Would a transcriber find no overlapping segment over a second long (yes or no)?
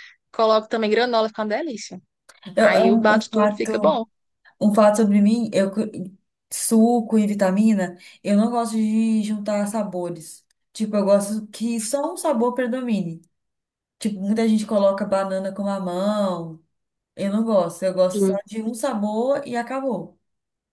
no